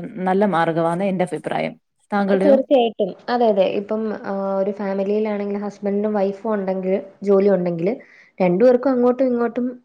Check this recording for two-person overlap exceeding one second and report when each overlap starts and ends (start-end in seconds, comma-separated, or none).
none